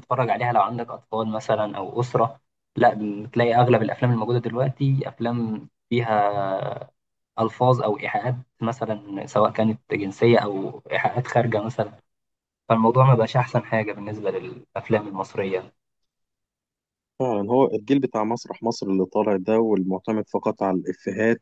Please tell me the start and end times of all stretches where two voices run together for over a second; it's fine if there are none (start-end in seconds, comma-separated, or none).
none